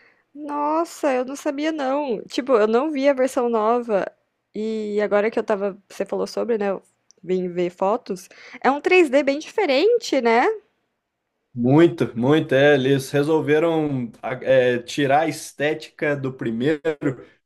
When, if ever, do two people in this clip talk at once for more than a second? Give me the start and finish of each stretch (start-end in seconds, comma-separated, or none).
none